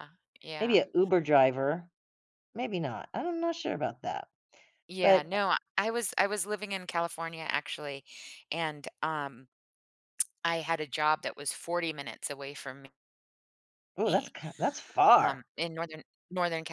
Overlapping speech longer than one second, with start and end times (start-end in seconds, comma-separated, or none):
none